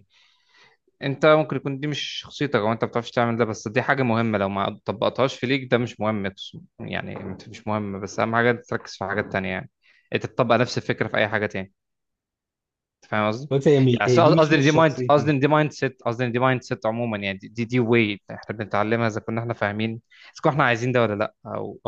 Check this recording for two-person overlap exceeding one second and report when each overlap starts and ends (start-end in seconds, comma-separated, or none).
13.9-15.3